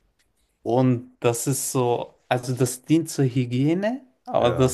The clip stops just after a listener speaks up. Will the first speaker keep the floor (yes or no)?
yes